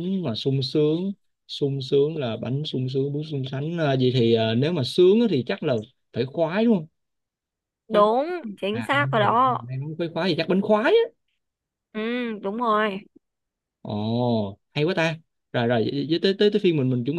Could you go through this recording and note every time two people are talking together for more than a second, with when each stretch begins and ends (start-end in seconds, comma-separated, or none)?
7.9-9.6